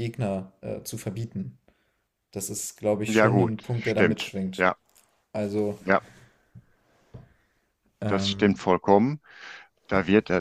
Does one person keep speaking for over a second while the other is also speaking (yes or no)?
yes